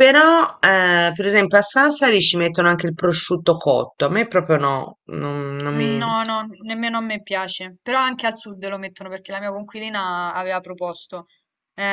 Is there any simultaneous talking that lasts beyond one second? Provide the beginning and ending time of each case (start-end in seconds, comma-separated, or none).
none